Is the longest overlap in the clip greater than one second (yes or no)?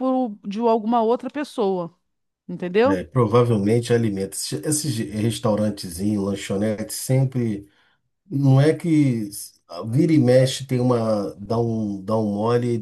no